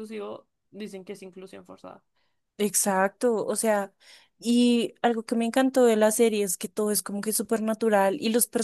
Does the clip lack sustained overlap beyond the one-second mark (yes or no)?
yes